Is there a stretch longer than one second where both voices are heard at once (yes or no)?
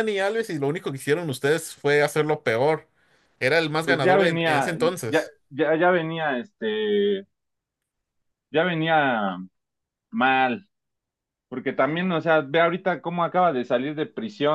yes